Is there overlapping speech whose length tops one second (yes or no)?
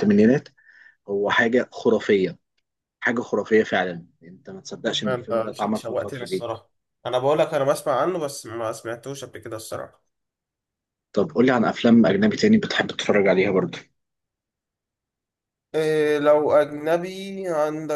yes